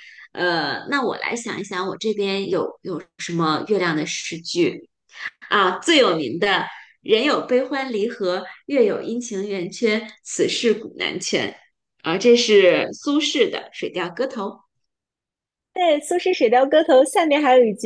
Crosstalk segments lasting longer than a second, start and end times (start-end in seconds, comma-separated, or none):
none